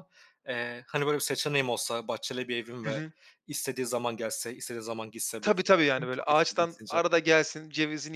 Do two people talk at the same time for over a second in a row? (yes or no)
yes